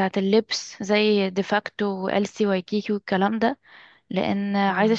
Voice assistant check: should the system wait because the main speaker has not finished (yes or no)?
yes